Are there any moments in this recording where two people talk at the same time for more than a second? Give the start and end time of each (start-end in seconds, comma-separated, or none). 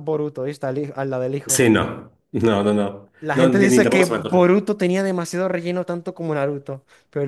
3.2-4.4